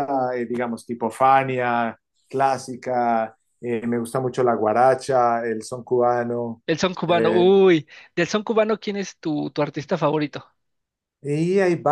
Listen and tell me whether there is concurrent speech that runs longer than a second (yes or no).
no